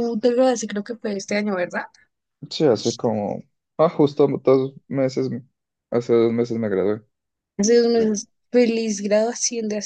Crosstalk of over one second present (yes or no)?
no